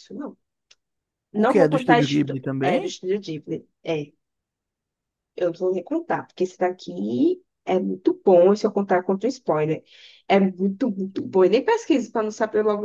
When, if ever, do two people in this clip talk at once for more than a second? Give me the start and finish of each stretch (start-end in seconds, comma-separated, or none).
1.3-3.0